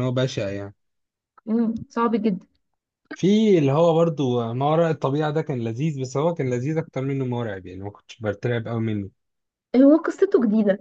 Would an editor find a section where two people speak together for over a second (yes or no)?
no